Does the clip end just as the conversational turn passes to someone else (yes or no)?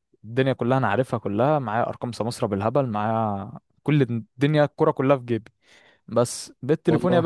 no